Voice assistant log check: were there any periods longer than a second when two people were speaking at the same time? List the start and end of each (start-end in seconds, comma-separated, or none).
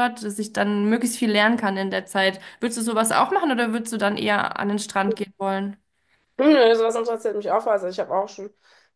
none